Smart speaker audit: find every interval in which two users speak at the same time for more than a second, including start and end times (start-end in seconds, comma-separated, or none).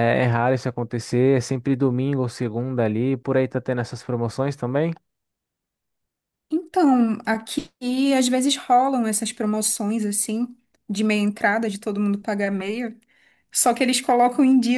none